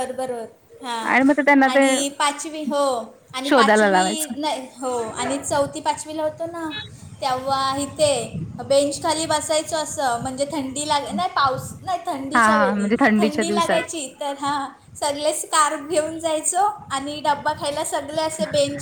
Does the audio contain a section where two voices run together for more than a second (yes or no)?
yes